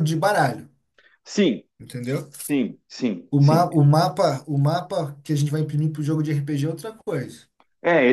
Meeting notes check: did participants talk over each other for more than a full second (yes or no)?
no